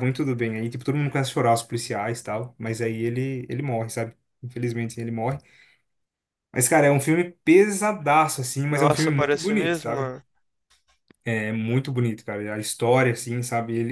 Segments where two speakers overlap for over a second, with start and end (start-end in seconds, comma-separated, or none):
8.7-10.1